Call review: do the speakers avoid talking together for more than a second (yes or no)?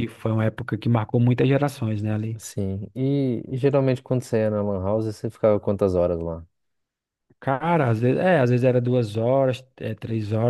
yes